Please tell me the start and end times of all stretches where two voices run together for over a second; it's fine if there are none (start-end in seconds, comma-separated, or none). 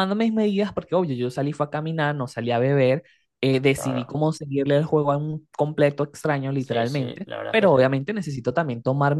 6.6-8.0